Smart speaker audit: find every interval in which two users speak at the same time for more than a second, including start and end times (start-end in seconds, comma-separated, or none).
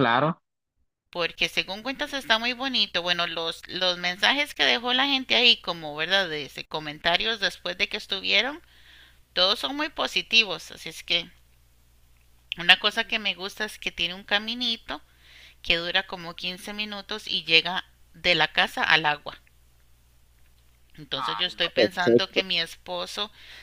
21.1-22.4